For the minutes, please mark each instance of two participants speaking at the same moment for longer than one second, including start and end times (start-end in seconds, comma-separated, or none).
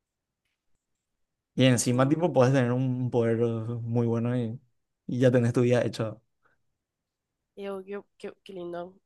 none